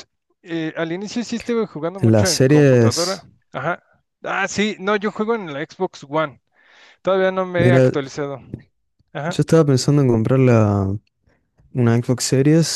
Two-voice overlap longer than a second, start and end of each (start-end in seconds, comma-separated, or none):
2.0-3.3